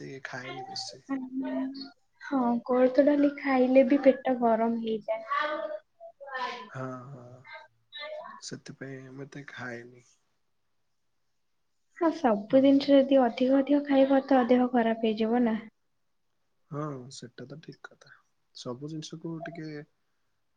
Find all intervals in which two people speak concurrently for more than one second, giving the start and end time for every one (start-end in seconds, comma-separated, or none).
none